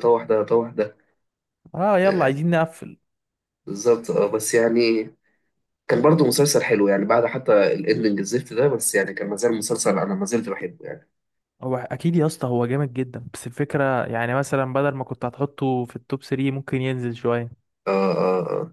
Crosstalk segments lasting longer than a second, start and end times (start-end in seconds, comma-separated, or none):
none